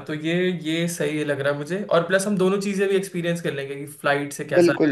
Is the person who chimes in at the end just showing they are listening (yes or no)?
no